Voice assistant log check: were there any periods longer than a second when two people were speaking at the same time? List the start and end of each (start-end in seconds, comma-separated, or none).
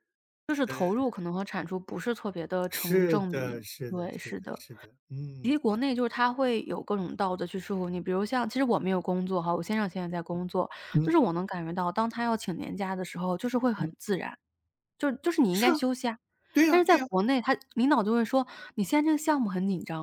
2.7-4.6